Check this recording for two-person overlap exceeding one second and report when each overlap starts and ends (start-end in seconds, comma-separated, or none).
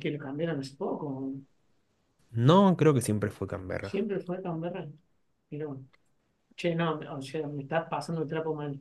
none